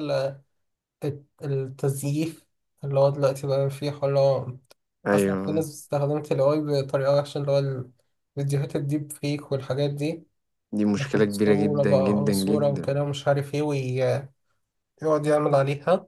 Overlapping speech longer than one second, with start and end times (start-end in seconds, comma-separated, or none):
11.0-13.0